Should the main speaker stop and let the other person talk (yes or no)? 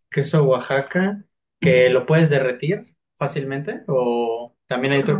no